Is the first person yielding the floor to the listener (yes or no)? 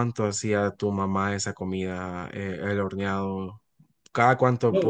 yes